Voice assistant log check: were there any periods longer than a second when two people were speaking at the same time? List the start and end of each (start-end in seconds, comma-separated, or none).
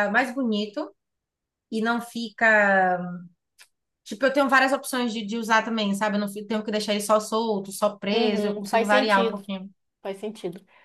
8.1-9.4